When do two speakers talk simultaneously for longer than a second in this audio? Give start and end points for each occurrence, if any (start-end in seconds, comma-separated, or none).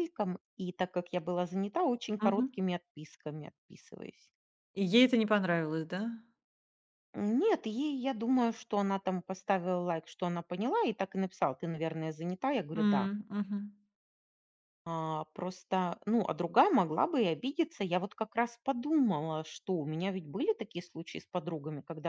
none